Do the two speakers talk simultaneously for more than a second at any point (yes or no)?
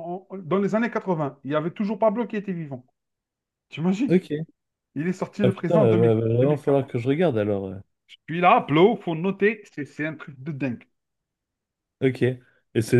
yes